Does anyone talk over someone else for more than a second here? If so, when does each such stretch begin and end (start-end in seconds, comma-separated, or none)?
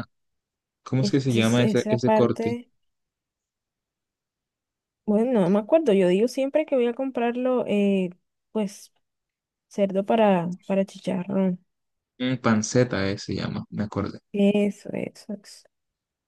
1.0-2.6